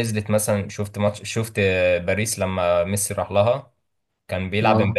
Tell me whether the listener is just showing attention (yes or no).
yes